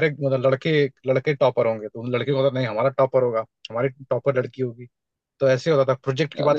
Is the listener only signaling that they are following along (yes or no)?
yes